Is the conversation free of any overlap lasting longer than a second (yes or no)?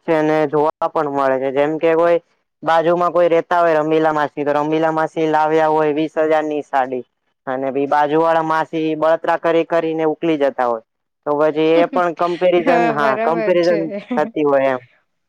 no